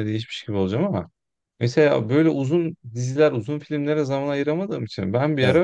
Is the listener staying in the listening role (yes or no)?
yes